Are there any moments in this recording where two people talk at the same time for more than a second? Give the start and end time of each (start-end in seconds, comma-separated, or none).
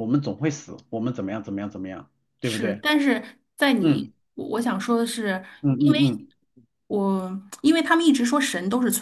none